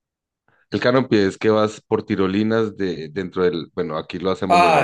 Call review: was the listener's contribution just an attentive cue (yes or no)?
no